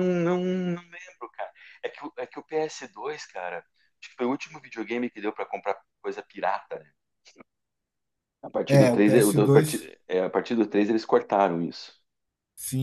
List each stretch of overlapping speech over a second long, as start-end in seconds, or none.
8.7-9.9